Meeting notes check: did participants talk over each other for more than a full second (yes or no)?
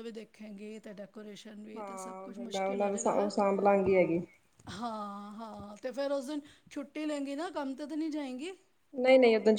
yes